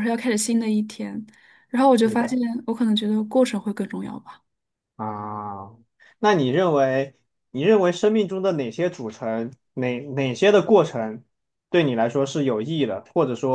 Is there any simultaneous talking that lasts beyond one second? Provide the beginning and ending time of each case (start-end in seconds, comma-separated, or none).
none